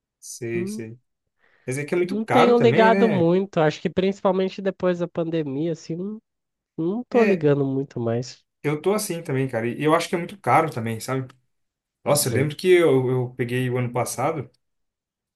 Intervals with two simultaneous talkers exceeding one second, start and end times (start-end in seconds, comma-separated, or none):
2.1-3.3